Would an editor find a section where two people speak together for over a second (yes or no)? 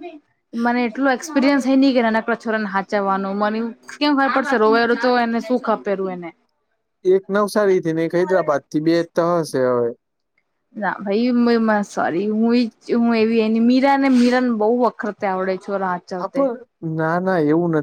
no